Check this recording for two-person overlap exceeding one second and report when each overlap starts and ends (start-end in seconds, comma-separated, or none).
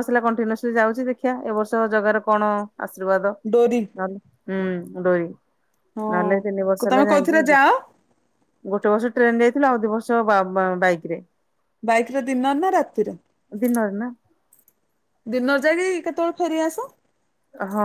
6.1-7.6